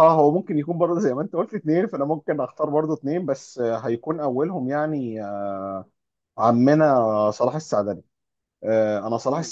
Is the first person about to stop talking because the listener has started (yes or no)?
no